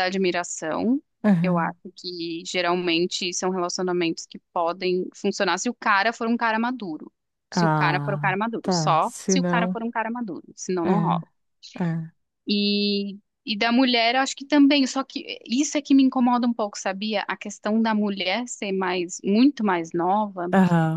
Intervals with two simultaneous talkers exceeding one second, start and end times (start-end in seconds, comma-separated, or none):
7.5-9.8